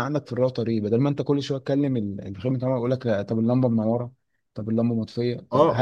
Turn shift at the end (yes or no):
yes